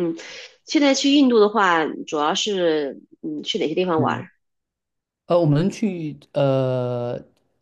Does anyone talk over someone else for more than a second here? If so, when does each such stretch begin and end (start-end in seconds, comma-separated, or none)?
none